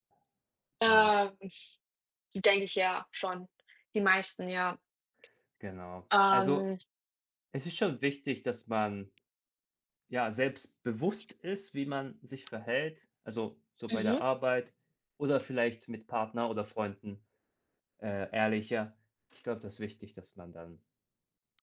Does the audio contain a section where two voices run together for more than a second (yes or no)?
no